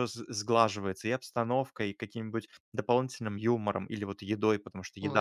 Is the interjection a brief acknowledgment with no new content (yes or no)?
no